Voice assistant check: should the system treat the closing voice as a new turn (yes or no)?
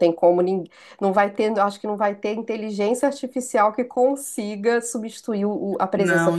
yes